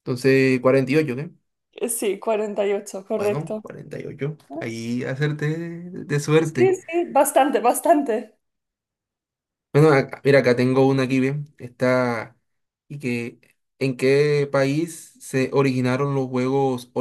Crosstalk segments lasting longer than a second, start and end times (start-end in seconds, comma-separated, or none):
none